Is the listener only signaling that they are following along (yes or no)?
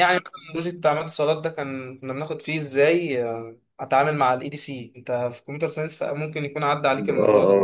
no